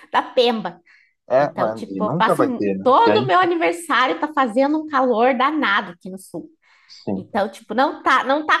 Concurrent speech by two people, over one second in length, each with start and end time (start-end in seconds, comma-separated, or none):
1.4-3.5